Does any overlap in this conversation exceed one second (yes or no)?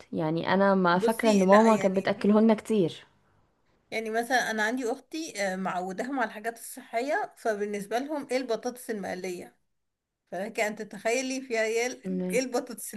yes